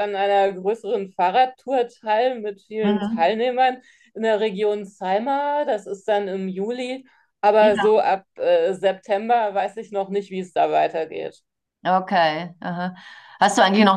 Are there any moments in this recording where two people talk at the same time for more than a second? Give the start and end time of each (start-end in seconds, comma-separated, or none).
none